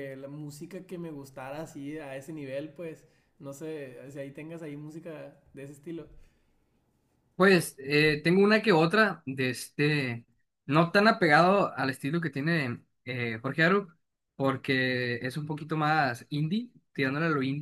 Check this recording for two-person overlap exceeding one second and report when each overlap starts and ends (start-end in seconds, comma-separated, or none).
none